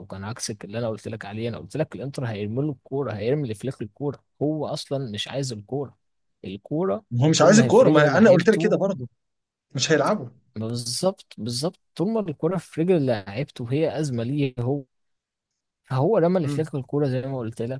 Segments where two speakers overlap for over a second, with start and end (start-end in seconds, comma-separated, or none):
7.2-8.8